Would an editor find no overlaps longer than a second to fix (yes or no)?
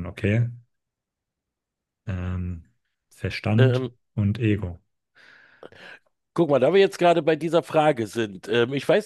yes